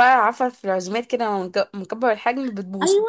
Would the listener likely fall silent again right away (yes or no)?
no